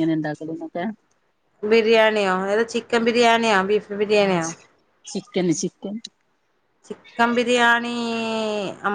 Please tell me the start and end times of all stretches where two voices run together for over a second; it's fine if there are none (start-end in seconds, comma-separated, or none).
none